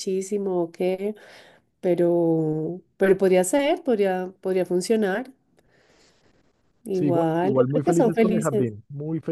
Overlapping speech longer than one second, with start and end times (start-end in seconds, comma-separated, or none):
6.9-8.7